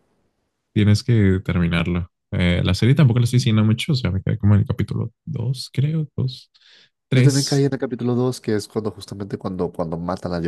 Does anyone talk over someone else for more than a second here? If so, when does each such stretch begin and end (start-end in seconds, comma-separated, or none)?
none